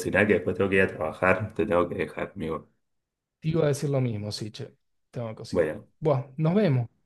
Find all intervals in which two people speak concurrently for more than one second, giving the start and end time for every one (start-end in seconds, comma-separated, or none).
none